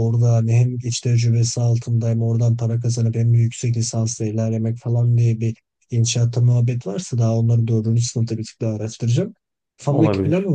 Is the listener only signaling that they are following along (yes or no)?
yes